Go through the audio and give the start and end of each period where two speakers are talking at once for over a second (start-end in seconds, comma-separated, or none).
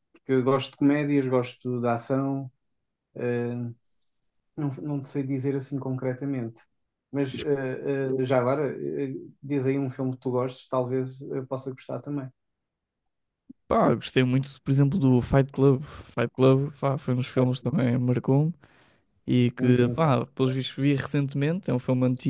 none